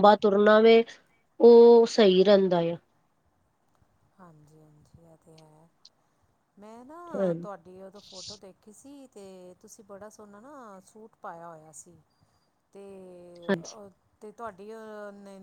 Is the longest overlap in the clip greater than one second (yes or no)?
no